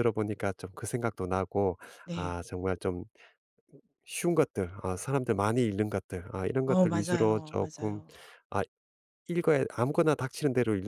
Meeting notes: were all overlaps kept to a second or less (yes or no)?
no